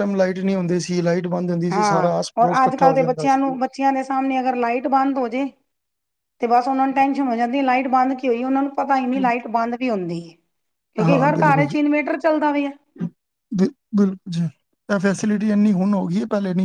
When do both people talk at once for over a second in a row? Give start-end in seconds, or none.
1.7-3.5